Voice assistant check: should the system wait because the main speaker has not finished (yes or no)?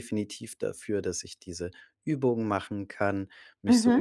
yes